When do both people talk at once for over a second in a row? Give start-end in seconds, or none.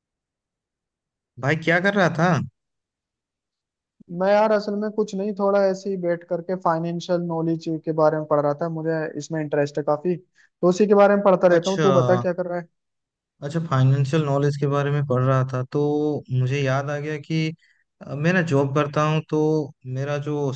none